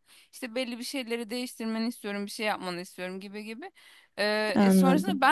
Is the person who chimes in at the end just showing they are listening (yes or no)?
yes